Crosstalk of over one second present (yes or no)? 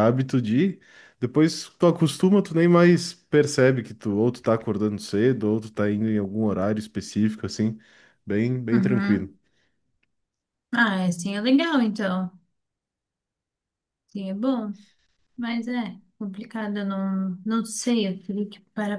no